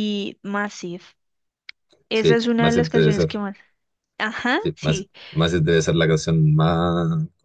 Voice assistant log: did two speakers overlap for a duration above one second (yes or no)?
yes